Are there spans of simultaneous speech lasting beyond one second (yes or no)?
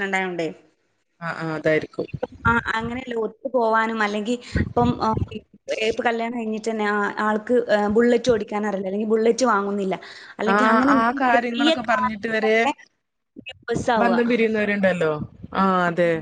yes